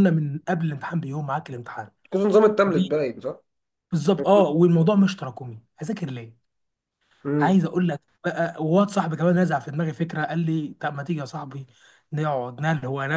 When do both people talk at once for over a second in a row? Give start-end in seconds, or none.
none